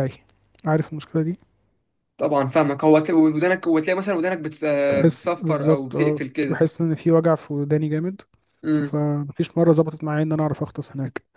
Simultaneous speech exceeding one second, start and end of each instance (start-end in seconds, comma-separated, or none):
4.9-6.6